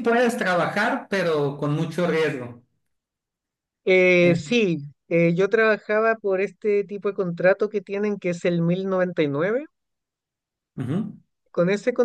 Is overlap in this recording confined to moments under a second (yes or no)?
yes